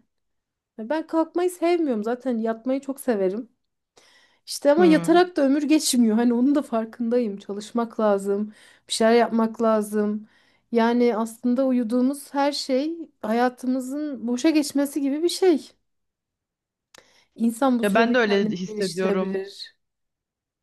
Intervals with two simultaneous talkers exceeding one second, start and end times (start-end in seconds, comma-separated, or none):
17.8-19.5